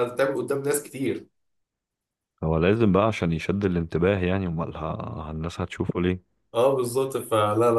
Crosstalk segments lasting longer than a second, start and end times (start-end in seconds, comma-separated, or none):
none